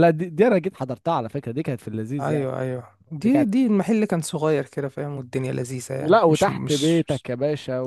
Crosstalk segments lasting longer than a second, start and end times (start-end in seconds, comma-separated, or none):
6.0-7.3